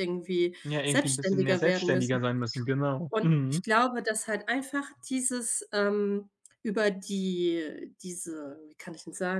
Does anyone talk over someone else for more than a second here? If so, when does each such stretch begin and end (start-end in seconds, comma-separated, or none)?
0.6-2.2